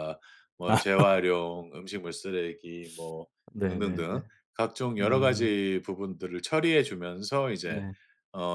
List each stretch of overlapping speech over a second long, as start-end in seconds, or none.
none